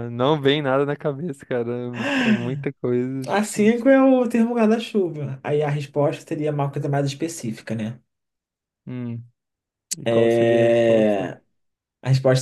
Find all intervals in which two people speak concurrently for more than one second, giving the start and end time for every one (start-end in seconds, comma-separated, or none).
10.0-11.3